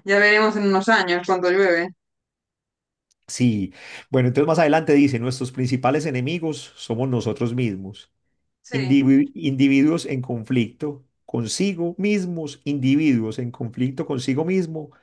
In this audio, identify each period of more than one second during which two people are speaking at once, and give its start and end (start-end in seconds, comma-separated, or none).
none